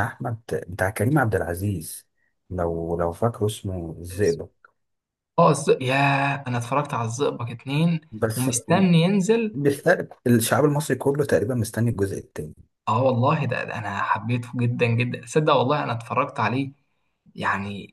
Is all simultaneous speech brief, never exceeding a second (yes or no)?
yes